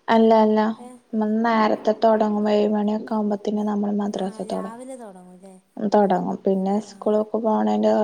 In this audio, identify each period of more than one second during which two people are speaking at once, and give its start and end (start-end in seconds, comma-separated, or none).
4.2-5.5